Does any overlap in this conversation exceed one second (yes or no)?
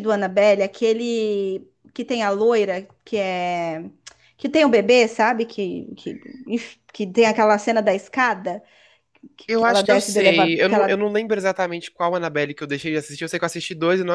yes